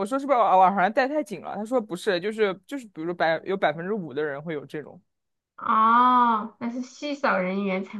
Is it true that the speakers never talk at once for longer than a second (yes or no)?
yes